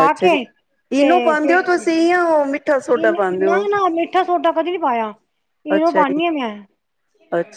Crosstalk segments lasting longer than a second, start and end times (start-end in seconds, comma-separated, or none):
none